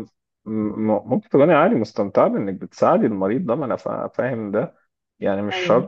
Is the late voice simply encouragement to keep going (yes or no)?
yes